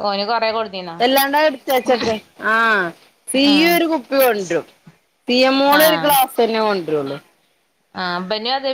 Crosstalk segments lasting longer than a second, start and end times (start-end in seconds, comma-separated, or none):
none